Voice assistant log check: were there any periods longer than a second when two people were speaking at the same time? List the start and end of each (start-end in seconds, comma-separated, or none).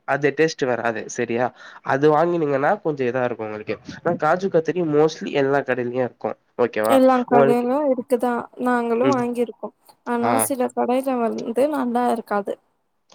none